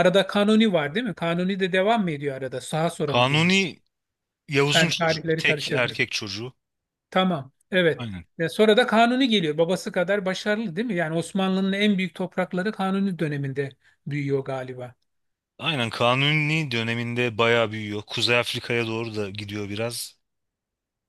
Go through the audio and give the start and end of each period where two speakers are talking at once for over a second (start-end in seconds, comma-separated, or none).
4.7-6.0